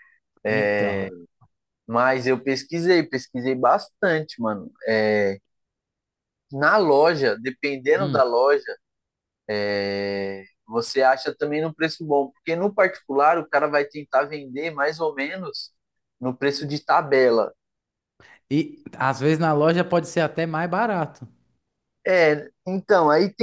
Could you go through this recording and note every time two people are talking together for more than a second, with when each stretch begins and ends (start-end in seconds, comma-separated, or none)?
none